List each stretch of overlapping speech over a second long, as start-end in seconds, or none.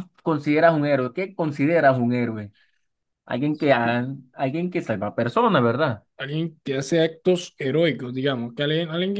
none